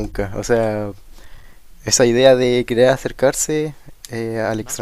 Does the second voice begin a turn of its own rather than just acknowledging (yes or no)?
no